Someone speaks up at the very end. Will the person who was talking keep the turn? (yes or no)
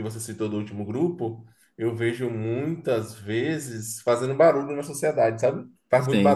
no